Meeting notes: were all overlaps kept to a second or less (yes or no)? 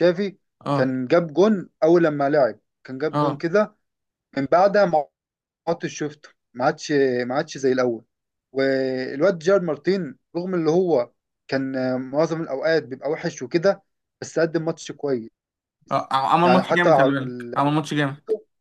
no